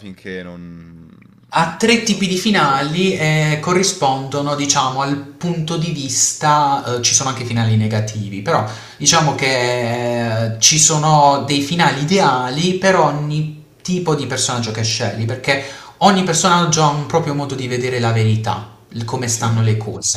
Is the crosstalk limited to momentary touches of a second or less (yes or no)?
yes